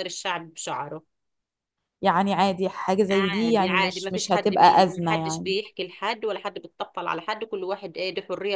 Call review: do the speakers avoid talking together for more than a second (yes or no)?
no